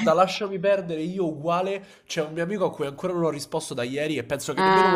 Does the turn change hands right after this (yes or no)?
no